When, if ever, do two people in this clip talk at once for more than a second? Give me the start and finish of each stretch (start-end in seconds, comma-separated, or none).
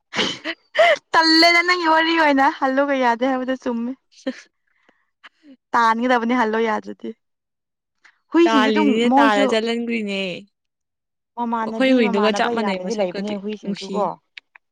11.7-13.9